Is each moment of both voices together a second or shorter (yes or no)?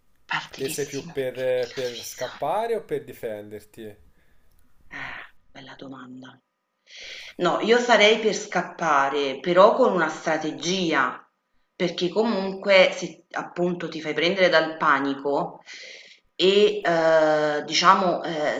no